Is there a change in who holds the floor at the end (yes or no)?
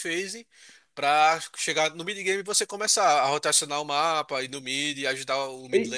yes